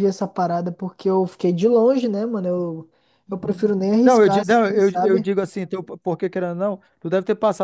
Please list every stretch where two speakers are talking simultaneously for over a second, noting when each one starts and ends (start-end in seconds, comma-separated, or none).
3.3-5.3